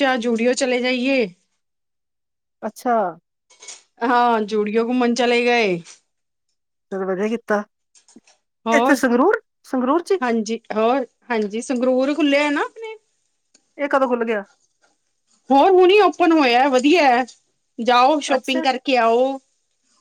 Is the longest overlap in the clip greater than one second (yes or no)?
no